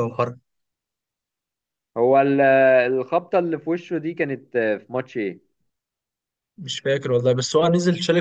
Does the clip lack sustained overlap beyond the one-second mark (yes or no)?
yes